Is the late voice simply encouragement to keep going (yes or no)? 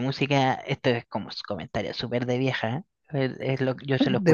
yes